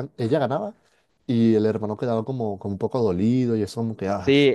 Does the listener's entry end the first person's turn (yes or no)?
yes